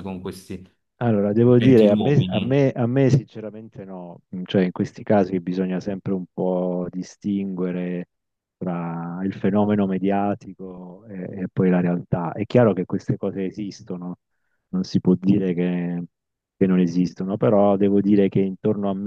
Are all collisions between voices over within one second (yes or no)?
no